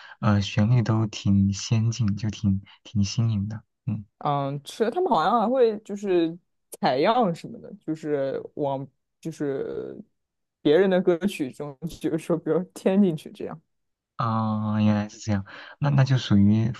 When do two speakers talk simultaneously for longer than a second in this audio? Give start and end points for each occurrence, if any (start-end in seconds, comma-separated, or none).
none